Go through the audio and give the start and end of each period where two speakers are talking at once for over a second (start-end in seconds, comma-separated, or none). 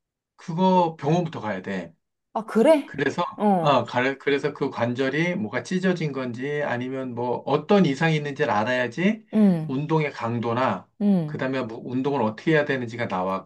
none